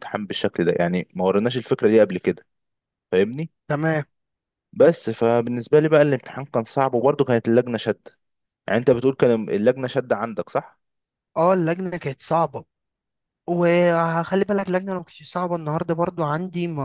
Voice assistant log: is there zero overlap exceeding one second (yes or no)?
yes